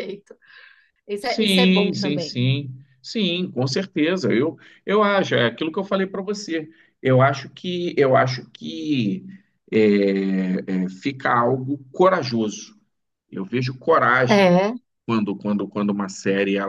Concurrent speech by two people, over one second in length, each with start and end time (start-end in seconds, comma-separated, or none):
1.2-2.4